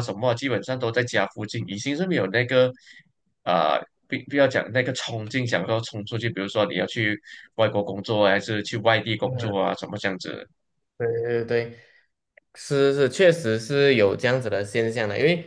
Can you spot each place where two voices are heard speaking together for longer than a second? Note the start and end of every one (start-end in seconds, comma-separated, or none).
none